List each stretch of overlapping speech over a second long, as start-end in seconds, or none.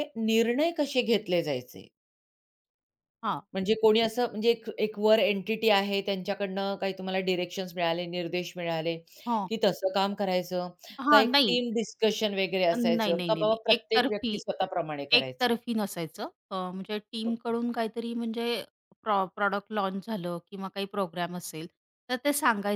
12.8-14.4